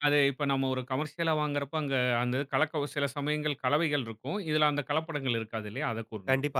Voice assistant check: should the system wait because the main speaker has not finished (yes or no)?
no